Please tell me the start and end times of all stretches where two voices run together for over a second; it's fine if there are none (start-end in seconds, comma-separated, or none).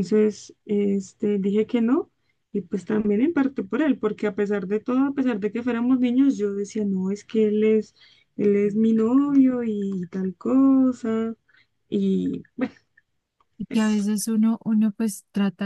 none